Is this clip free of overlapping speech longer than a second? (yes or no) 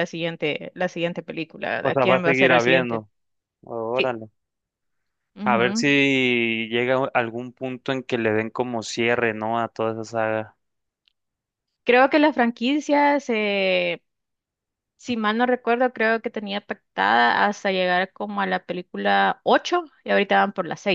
no